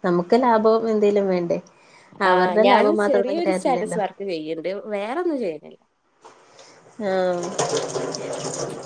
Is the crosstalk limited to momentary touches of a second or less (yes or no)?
no